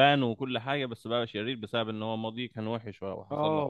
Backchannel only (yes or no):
no